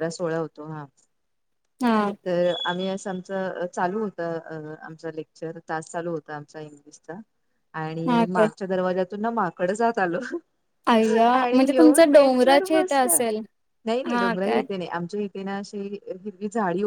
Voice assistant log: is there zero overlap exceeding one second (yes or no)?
no